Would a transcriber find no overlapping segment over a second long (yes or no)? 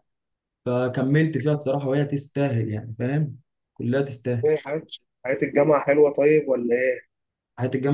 yes